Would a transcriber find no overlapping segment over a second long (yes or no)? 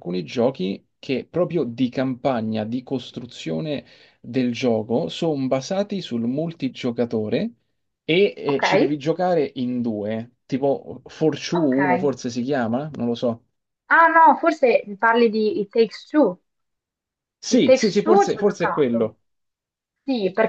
no